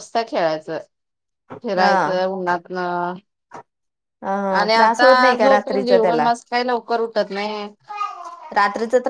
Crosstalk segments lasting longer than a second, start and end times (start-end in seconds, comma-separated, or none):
4.6-6.3